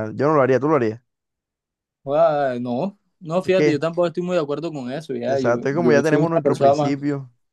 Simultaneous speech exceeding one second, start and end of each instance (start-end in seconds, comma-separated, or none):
5.2-6.9